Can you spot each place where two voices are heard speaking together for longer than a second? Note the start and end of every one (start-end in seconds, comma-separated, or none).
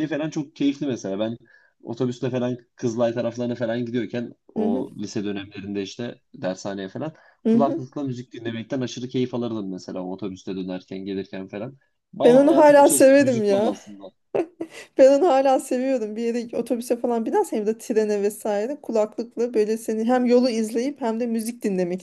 12.2-13.8